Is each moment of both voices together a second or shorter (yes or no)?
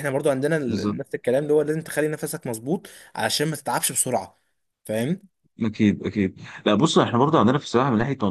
yes